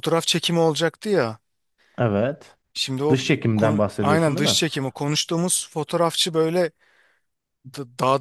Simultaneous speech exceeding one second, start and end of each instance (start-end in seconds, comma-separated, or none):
3.1-4.6